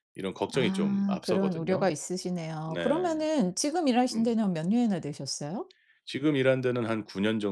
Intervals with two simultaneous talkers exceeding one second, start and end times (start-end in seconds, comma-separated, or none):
0.5-1.9